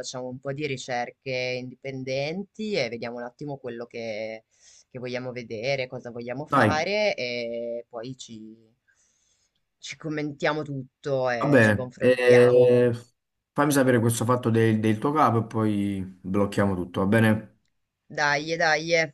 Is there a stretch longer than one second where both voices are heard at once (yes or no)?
yes